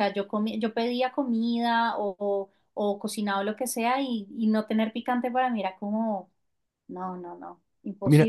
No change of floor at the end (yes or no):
no